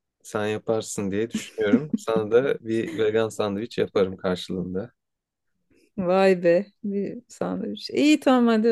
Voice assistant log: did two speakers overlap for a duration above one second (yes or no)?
no